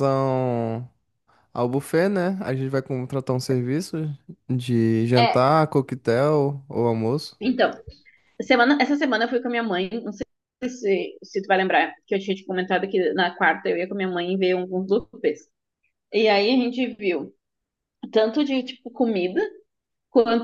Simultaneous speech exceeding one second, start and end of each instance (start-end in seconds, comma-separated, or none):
none